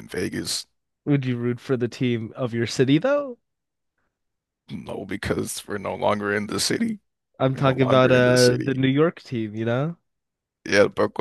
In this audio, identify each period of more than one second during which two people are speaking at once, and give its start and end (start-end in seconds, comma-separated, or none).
7.5-8.8